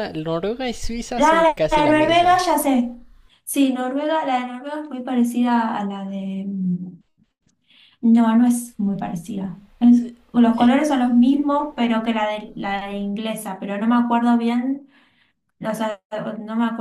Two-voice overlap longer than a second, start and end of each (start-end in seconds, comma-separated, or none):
1.2-2.4